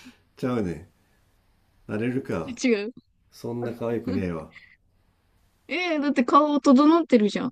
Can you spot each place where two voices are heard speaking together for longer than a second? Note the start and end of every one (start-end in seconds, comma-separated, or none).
none